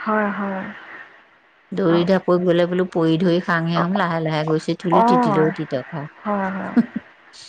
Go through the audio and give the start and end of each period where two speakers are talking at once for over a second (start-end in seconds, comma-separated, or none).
none